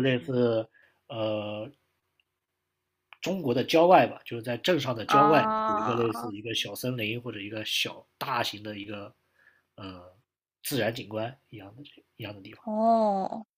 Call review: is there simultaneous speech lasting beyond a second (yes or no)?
yes